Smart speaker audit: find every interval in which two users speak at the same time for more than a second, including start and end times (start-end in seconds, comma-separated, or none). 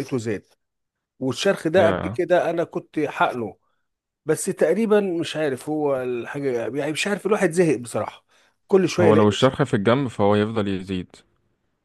none